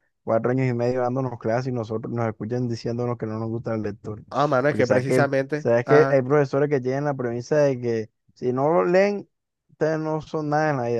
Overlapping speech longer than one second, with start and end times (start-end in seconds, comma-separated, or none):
4.7-6.2